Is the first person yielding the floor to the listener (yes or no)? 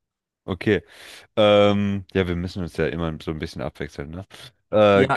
yes